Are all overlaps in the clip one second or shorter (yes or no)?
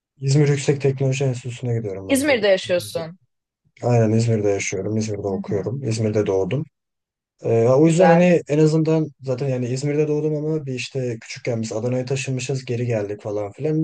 yes